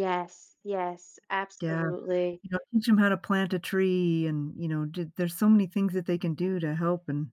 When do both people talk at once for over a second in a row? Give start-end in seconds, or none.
none